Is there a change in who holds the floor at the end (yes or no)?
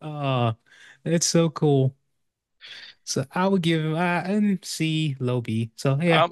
yes